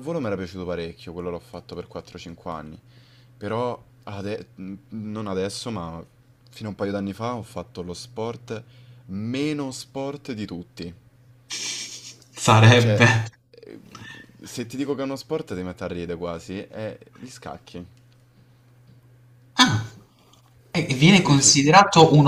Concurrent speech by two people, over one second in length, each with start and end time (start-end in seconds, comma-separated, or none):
none